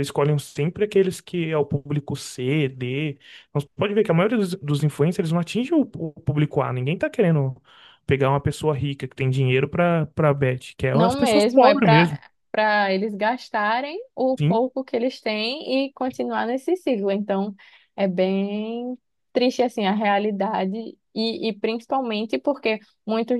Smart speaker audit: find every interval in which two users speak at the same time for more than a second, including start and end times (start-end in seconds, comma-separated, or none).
10.9-12.2